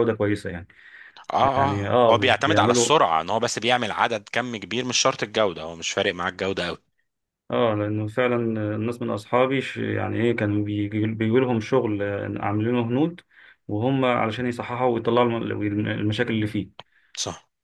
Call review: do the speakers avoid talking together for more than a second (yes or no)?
no